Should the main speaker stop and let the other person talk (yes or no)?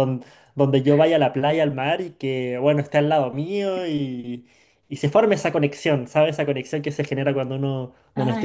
no